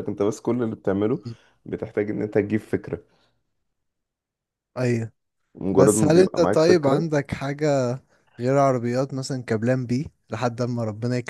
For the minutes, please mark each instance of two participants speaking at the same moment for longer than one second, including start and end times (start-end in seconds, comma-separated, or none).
5.8-7.1